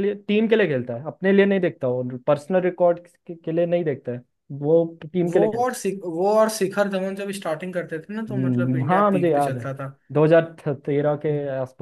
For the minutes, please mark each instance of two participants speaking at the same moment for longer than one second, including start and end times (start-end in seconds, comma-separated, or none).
8.3-9.7